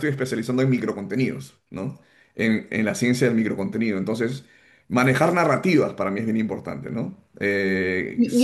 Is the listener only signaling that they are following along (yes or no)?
no